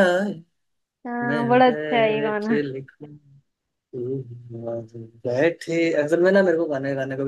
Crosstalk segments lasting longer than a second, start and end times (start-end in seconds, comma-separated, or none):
1.3-2.6